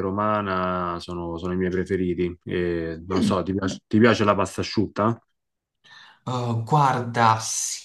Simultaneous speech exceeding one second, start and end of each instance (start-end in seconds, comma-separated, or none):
none